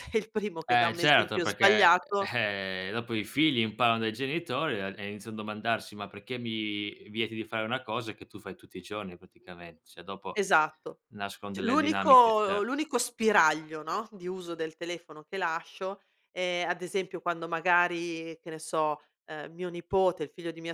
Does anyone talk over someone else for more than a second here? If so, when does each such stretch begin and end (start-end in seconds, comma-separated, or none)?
0.6-2.3, 11.5-12.8